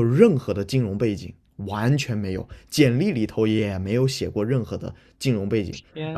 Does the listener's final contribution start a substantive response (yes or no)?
no